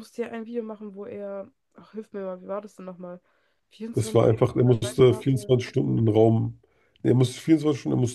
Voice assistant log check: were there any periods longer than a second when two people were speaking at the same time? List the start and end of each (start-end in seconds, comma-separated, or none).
3.9-5.5